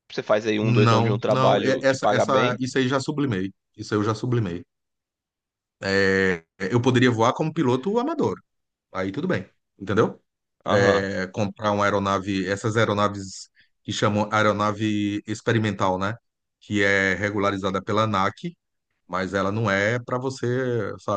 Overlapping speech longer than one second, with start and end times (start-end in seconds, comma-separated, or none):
0.6-2.6